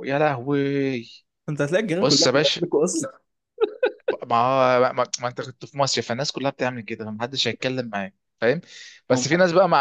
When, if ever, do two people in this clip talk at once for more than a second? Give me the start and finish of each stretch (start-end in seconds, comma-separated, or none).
none